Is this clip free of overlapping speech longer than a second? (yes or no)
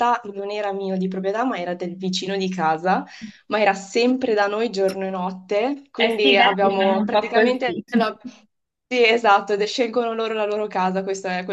no